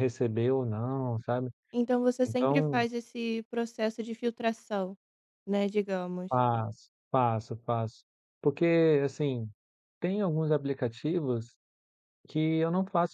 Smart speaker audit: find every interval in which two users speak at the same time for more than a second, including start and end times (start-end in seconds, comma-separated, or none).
none